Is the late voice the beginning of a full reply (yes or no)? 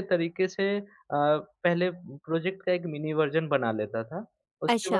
no